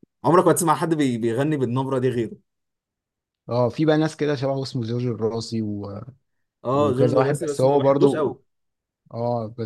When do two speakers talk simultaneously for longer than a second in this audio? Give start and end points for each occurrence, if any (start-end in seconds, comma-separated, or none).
6.7-8.3